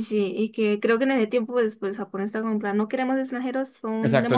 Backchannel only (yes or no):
no